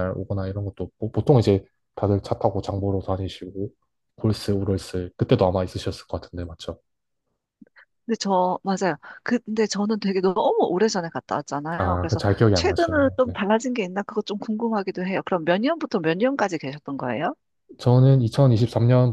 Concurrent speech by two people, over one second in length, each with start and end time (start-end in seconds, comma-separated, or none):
11.8-13.3